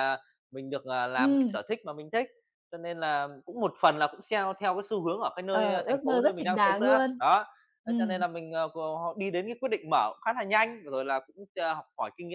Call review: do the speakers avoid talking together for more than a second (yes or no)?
no